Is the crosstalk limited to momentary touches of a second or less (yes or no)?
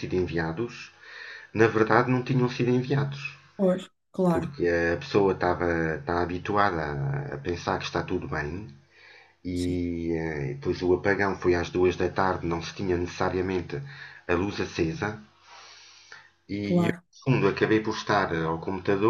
yes